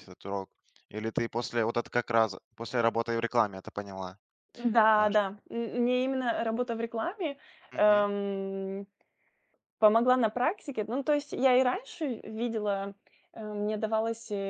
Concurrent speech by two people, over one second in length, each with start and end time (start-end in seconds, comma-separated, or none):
none